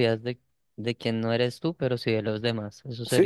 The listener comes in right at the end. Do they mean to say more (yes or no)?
yes